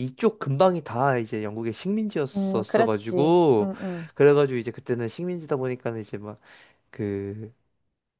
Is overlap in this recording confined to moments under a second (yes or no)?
no